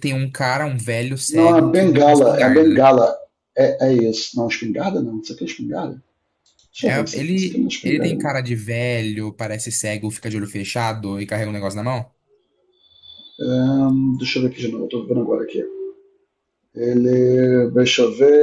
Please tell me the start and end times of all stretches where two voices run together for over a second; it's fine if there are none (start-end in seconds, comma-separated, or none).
1.3-2.9, 6.8-8.3